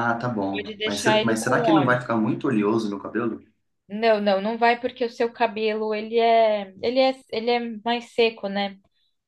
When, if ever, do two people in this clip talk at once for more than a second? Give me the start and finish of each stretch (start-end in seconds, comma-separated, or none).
0.5-2.0